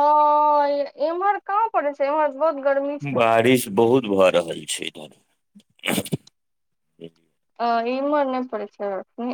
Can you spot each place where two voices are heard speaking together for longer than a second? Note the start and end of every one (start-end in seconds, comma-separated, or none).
none